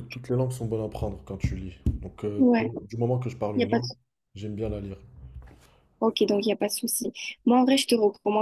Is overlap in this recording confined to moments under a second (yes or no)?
yes